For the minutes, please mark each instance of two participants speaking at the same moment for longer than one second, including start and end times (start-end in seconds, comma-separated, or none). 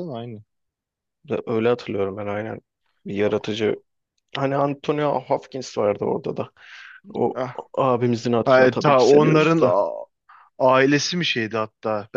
8.4-9.8